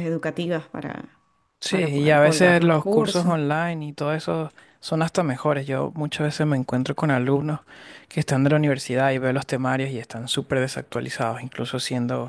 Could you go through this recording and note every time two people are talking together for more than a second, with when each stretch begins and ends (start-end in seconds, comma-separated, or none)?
1.7-3.4